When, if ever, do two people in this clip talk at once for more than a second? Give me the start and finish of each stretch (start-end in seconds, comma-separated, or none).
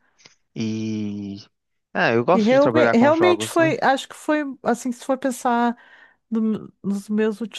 2.3-3.7